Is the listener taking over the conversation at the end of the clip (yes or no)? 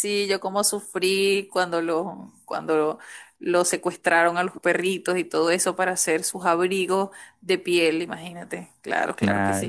yes